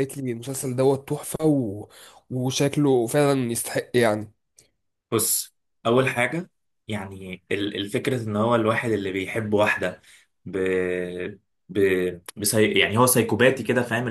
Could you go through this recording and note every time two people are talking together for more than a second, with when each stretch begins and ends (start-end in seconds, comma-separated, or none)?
none